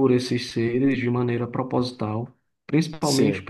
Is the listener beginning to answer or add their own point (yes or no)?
no